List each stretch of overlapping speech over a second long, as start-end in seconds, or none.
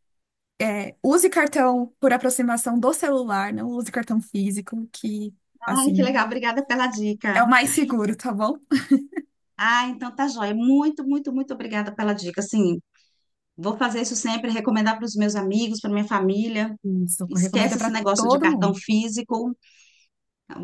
17.3-18.8